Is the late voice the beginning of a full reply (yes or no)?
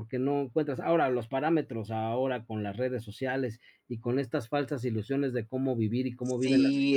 yes